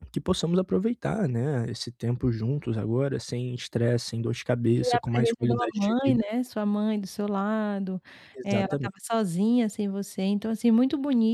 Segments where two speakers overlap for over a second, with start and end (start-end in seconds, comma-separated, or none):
4.8-6.2